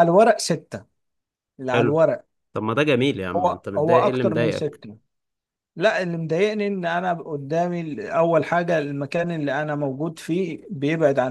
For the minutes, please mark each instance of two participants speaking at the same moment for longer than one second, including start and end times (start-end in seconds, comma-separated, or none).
3.4-4.8